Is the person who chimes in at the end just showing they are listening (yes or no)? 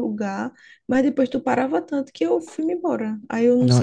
no